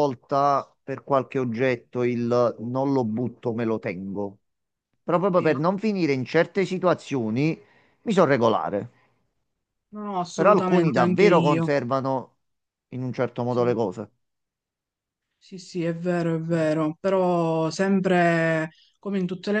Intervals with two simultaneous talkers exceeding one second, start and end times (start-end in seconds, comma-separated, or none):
10.3-11.7